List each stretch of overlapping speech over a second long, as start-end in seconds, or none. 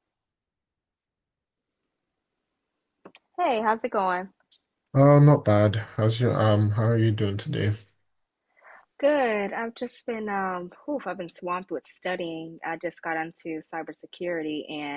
none